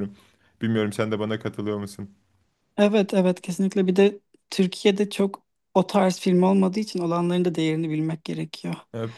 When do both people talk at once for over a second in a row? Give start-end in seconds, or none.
none